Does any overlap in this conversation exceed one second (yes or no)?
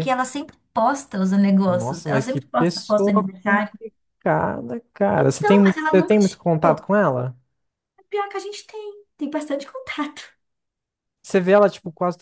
yes